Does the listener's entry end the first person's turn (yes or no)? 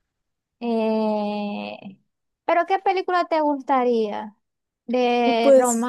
no